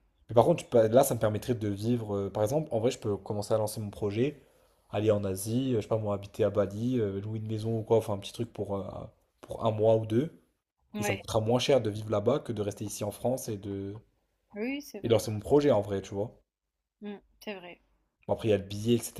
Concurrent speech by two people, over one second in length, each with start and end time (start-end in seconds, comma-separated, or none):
none